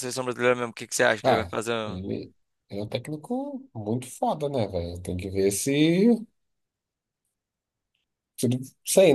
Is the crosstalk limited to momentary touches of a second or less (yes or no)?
yes